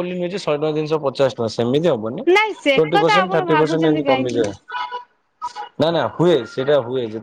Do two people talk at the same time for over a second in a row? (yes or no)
yes